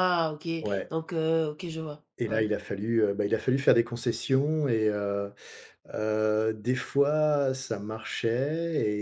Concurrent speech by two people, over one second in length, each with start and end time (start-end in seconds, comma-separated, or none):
none